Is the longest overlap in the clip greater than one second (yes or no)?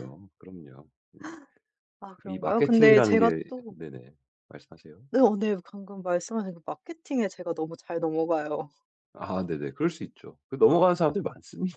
yes